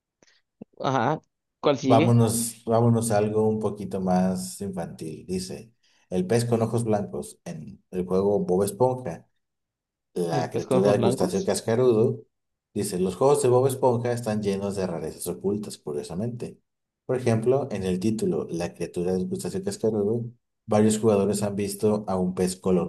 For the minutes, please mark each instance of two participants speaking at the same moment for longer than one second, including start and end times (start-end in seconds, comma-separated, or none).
10.3-11.5